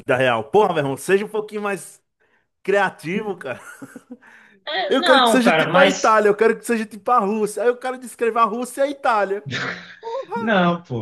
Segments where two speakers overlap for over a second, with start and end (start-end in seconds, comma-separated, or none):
4.9-6.2